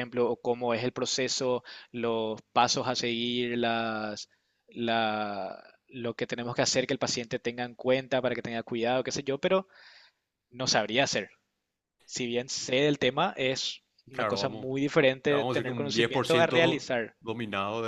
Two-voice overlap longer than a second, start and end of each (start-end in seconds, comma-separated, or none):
15.3-16.8